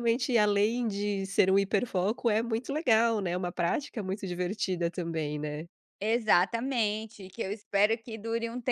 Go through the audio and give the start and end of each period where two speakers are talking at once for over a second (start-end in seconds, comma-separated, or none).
none